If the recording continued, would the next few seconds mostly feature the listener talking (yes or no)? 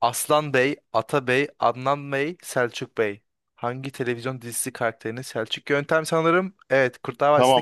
yes